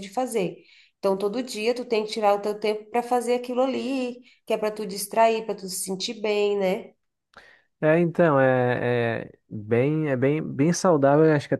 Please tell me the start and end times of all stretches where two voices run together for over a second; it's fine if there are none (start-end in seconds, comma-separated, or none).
none